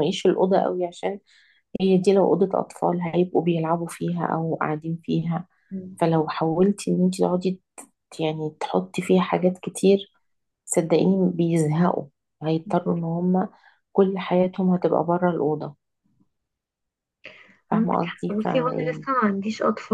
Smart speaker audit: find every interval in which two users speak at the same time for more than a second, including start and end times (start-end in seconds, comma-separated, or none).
17.7-19.1